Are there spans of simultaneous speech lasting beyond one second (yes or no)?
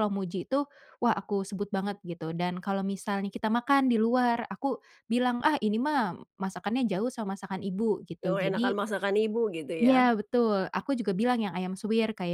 no